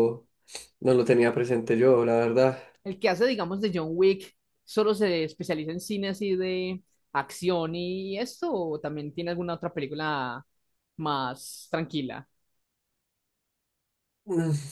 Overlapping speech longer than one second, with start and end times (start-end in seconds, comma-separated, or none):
none